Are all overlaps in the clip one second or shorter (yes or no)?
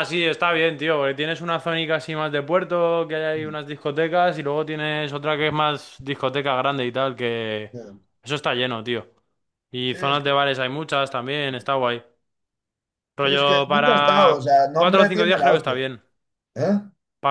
no